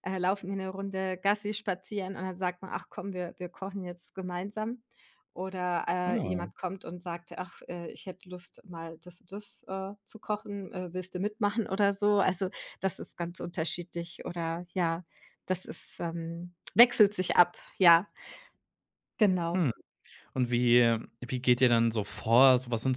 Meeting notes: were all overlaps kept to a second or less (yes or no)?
yes